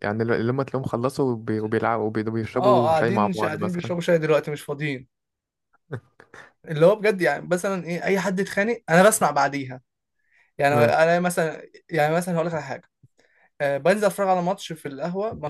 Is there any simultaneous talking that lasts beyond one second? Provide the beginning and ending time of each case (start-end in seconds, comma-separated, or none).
2.6-3.9